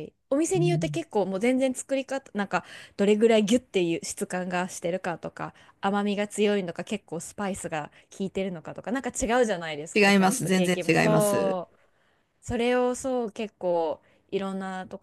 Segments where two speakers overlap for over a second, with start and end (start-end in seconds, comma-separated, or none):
9.9-11.6